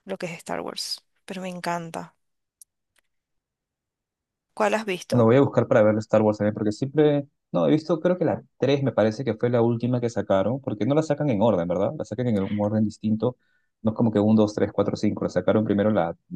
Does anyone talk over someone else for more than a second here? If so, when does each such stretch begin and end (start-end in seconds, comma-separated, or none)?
none